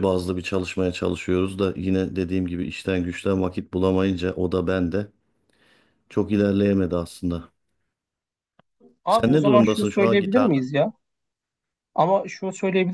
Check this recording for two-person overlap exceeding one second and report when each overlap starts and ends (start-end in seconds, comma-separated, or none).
9.1-10.7